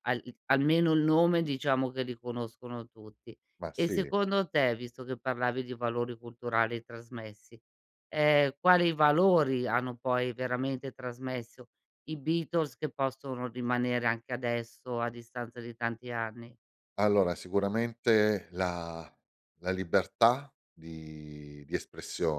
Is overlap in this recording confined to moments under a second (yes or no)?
yes